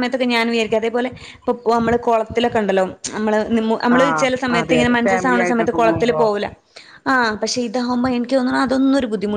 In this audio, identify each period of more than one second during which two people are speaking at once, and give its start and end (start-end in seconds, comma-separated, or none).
4.0-6.2